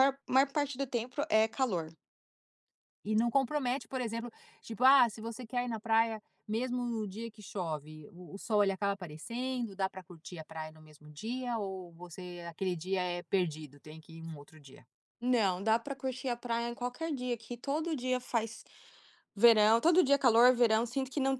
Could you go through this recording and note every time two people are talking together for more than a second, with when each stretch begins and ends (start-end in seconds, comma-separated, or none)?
none